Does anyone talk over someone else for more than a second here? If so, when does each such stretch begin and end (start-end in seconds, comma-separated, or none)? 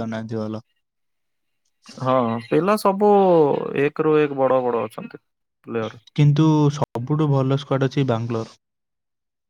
none